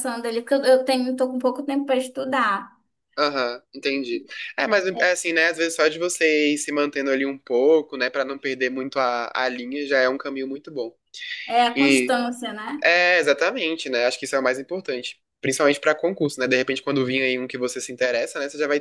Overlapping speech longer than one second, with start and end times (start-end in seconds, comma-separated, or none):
none